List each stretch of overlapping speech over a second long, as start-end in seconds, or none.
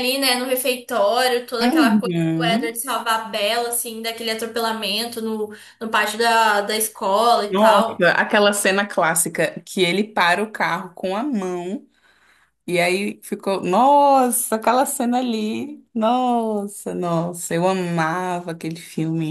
1.6-2.8